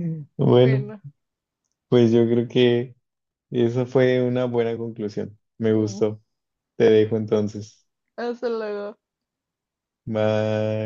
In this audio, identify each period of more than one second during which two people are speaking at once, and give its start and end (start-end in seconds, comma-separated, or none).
none